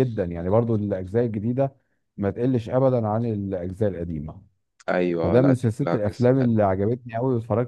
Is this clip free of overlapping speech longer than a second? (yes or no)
no